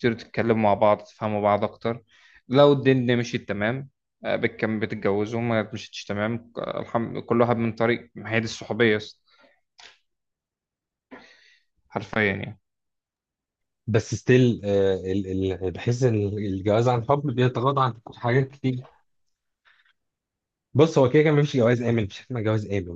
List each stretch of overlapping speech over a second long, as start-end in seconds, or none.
none